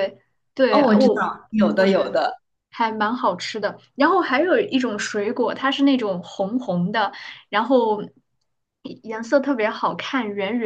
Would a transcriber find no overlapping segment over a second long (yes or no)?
no